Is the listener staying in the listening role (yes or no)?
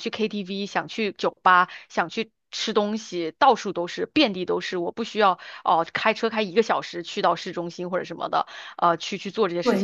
no